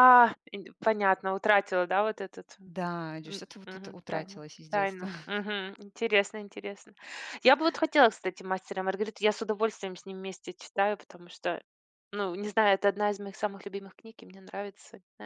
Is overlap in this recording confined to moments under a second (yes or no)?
no